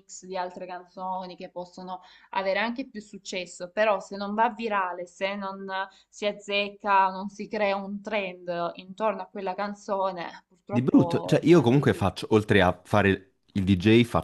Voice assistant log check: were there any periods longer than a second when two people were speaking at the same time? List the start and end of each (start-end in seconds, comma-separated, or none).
10.7-12.1